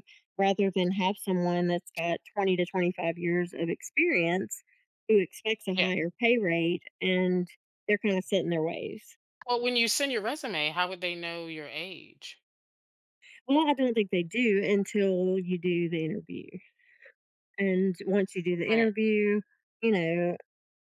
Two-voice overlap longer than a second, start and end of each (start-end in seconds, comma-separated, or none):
none